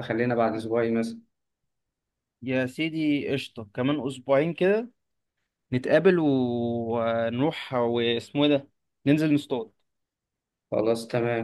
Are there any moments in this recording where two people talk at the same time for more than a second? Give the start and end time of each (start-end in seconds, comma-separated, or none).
none